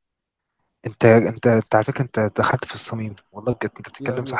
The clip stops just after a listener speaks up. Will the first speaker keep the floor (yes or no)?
yes